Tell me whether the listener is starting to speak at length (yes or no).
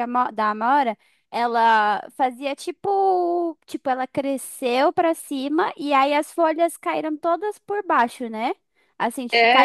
no